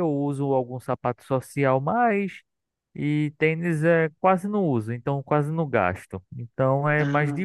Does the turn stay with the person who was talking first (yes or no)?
yes